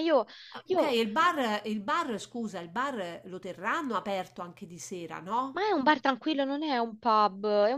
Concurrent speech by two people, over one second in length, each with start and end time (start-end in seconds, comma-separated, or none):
none